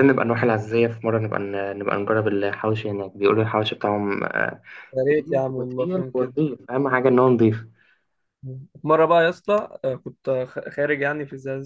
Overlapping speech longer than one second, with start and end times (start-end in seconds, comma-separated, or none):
5.1-6.3